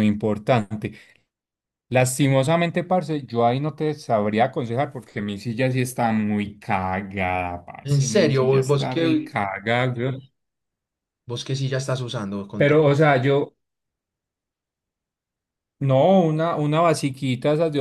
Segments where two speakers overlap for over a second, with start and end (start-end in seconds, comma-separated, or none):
7.8-9.3